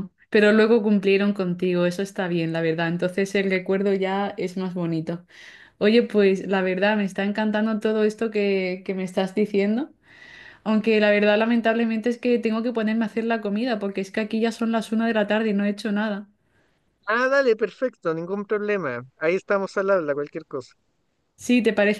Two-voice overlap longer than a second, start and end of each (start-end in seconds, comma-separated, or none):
none